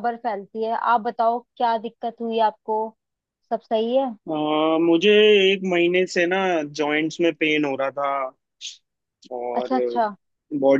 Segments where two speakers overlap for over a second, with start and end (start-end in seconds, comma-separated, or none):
none